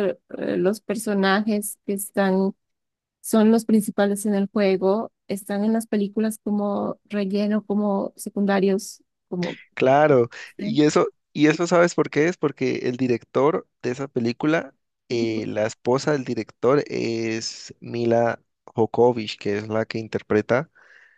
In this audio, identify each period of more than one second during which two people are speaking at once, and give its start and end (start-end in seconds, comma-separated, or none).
none